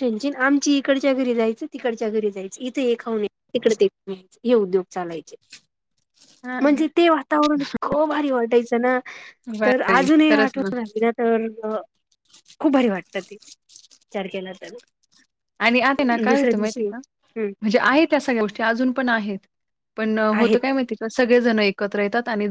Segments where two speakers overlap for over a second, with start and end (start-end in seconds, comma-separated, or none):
16.3-17.5